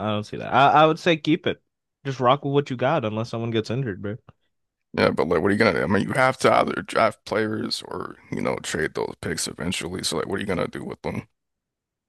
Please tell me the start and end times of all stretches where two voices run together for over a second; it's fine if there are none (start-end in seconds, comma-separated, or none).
none